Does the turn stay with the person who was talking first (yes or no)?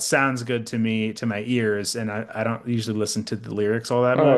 no